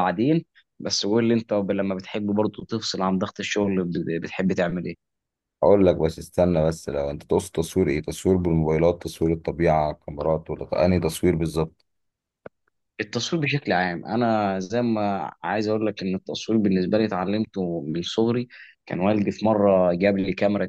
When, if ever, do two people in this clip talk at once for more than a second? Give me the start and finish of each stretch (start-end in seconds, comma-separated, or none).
none